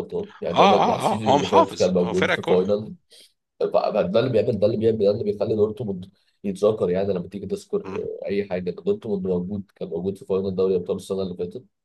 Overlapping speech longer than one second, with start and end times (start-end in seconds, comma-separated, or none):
0.5-2.5